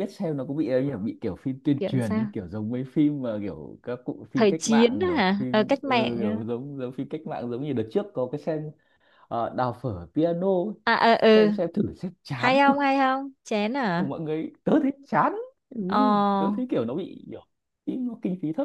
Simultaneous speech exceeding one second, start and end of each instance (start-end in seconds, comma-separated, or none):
4.3-6.4